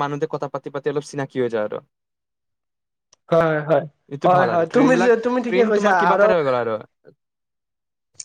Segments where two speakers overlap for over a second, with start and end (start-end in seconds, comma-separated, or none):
4.2-6.3